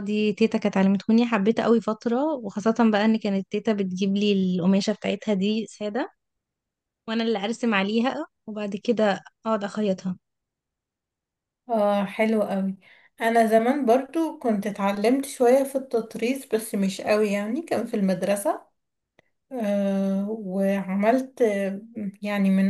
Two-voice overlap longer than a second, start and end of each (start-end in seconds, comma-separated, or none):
none